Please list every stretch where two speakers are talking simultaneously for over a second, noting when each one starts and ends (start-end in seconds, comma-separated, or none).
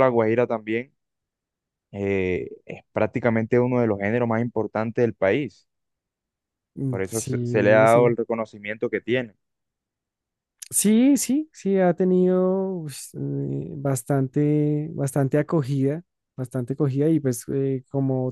6.9-8.2